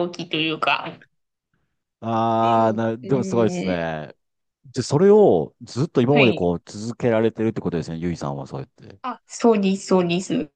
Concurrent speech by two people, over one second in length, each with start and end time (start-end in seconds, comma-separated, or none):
2.4-3.7